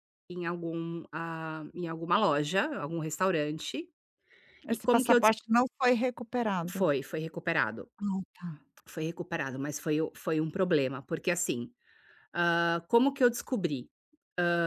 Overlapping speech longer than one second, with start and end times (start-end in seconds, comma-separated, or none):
none